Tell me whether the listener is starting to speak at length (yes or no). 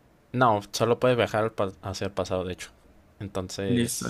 yes